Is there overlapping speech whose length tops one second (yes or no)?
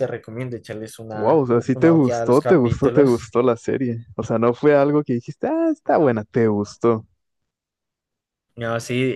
yes